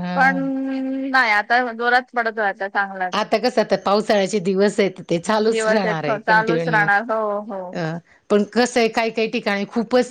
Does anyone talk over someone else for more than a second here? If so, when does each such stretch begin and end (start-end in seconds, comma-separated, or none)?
5.5-6.9